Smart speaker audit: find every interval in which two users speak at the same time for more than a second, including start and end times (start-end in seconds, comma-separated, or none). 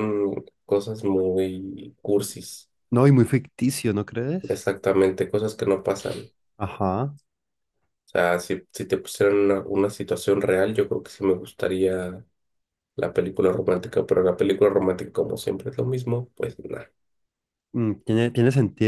none